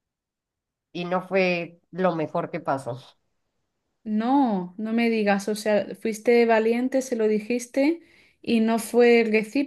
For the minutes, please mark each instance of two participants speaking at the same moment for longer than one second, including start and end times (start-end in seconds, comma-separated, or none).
none